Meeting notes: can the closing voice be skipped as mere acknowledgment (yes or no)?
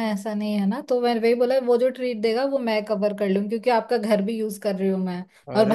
no